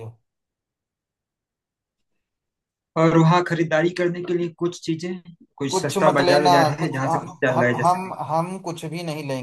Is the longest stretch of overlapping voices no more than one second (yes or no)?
no